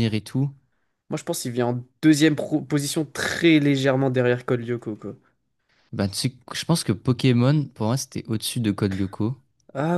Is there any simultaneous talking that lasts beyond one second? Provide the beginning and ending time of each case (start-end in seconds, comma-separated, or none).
none